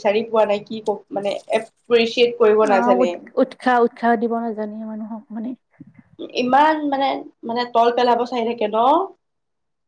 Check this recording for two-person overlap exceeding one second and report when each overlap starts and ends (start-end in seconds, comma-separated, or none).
none